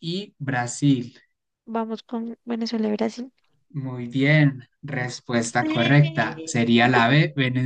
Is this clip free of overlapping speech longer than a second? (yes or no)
no